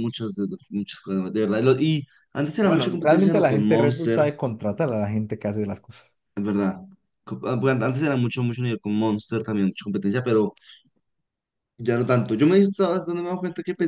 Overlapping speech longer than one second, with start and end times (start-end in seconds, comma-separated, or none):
2.6-4.3